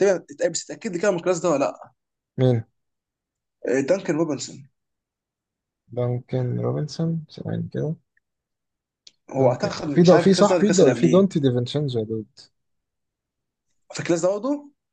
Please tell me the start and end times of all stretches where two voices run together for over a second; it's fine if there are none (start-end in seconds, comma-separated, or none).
9.4-11.3